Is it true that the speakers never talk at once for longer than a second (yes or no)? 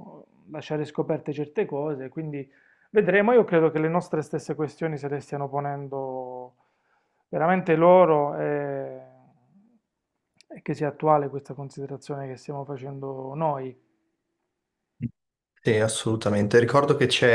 yes